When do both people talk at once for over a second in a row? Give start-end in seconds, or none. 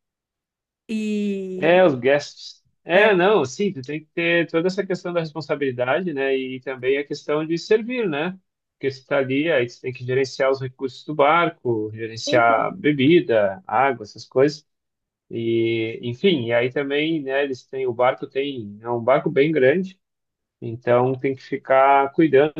none